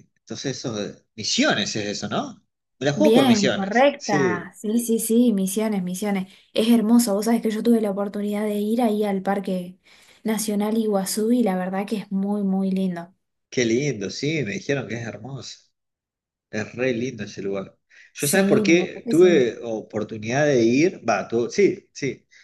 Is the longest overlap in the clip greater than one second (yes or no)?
yes